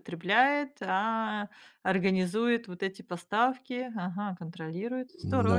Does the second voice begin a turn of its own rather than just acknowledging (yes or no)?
yes